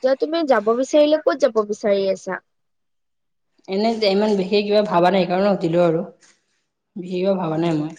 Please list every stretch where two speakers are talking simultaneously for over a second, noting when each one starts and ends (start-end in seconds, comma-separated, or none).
none